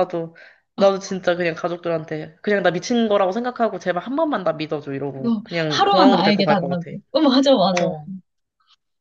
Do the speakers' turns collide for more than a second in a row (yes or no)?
yes